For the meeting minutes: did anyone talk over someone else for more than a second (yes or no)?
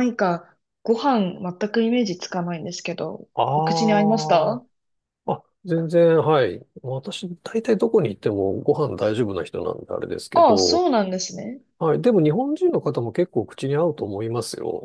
yes